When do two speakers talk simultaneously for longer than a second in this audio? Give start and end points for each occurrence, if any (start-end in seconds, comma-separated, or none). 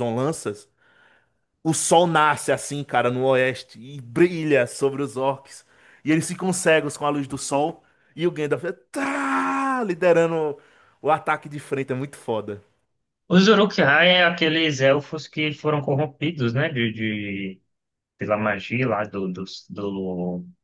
none